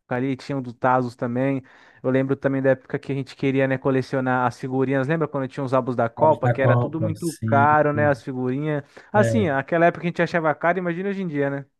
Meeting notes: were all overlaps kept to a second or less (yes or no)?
no